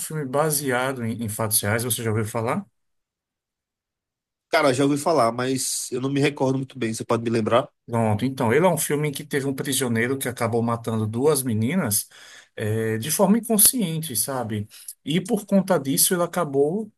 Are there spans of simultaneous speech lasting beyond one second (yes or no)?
no